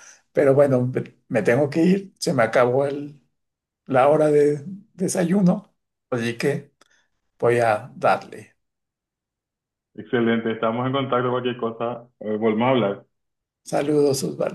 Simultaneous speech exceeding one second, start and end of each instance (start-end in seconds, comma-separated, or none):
none